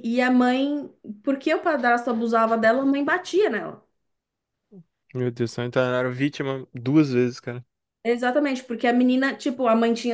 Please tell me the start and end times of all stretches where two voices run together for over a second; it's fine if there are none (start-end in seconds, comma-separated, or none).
none